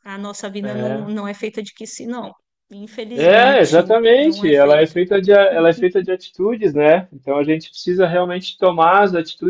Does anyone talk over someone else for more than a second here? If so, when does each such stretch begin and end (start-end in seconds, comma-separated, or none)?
3.1-5.0